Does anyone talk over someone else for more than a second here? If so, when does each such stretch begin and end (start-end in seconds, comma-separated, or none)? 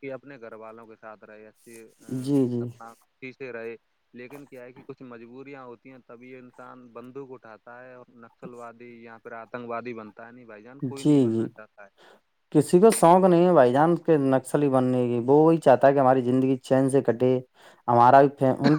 none